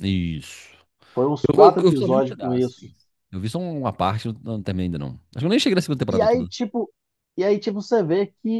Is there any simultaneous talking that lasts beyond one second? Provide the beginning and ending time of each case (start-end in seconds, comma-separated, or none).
1.6-2.9